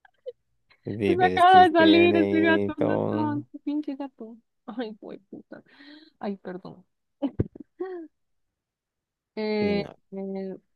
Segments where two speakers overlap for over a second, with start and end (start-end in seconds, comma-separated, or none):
1.1-3.4